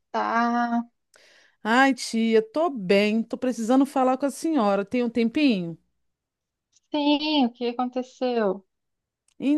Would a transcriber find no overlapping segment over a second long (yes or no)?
yes